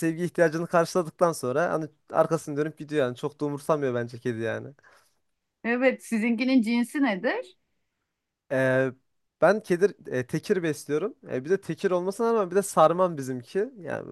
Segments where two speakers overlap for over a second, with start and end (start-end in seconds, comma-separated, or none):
none